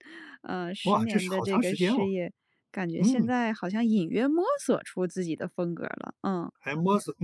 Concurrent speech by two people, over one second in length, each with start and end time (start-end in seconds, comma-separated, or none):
0.8-2.1